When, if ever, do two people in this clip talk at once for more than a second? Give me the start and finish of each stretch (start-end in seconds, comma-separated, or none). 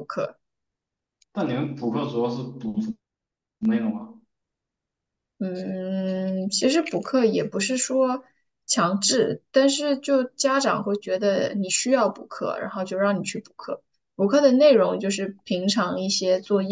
none